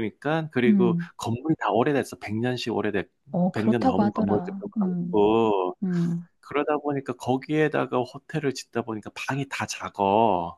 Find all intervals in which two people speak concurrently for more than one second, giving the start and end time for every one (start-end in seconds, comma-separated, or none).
3.5-5.2